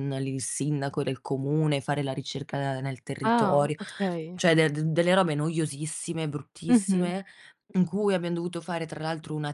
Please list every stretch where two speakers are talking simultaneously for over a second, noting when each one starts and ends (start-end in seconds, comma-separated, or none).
none